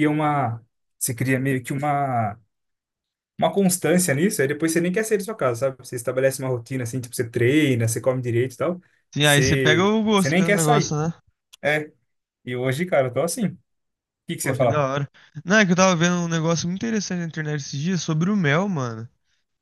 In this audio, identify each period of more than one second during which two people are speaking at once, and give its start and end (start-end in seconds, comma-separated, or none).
9.2-11.0